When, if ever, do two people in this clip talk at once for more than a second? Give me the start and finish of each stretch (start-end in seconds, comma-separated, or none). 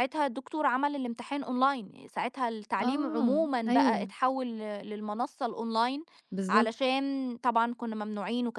2.8-4.1